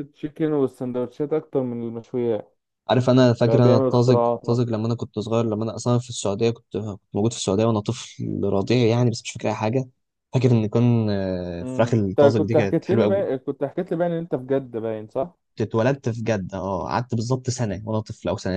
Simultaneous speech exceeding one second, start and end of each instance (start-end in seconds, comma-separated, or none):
3.4-4.7, 11.6-13.3